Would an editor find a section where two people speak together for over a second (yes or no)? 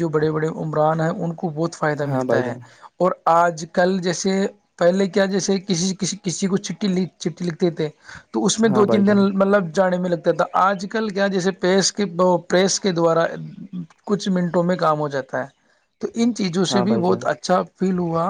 no